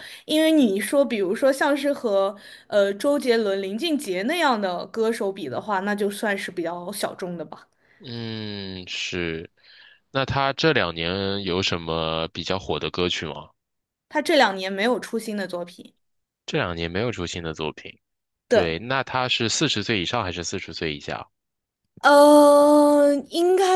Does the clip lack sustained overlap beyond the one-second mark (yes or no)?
yes